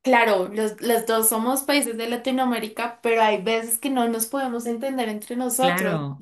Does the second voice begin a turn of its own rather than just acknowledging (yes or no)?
yes